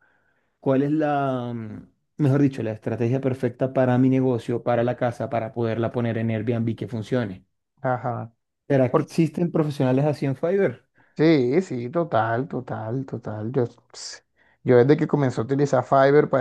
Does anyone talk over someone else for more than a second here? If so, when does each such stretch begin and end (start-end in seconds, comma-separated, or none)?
none